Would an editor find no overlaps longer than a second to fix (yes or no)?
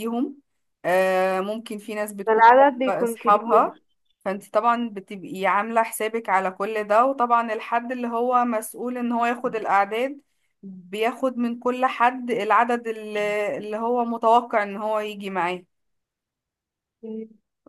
no